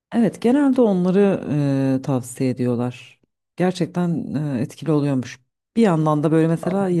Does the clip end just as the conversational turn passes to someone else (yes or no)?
no